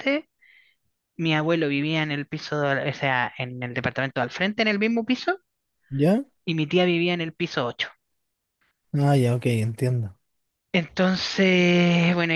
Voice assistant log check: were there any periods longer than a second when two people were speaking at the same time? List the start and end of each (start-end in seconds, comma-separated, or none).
none